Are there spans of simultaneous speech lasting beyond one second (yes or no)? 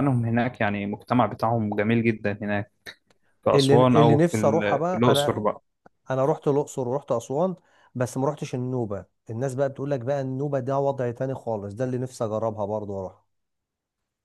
yes